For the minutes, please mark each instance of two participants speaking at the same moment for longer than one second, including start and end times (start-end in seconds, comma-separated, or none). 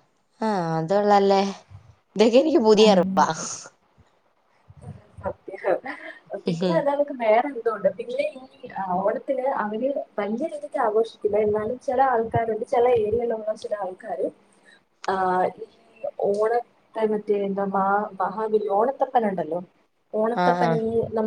none